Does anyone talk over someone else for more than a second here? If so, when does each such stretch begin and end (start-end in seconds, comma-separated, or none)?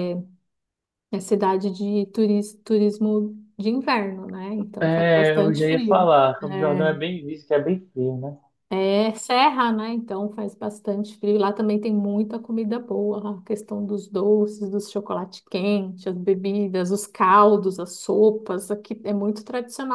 4.8-6.1